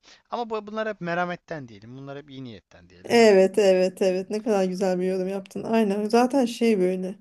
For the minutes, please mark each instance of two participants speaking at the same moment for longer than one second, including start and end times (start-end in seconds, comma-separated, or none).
none